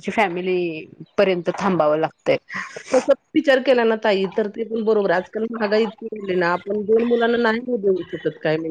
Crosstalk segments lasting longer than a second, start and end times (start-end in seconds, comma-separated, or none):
none